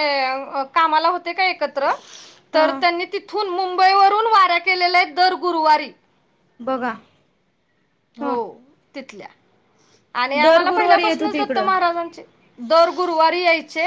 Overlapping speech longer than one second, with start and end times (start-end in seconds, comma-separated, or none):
10.4-11.7